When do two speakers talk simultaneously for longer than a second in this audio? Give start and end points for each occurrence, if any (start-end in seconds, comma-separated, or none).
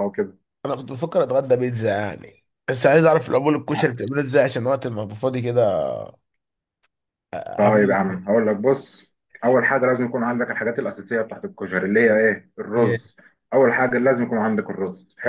none